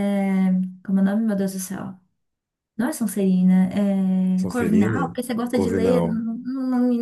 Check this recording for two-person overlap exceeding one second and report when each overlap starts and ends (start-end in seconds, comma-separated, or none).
4.4-6.2